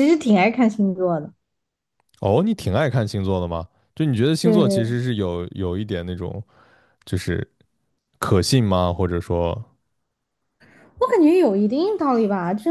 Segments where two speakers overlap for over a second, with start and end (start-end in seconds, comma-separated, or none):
none